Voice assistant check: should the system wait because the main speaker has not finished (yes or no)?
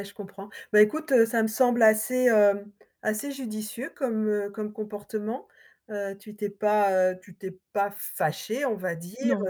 yes